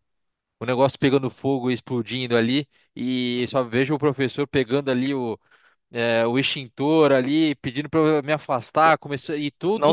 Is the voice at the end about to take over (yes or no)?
yes